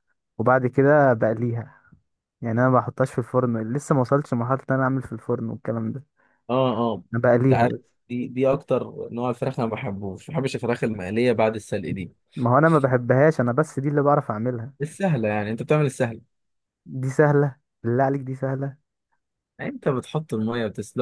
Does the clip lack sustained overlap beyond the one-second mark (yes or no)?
yes